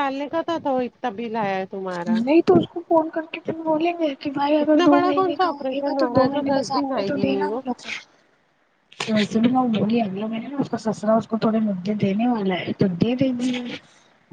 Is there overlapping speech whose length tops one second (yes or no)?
yes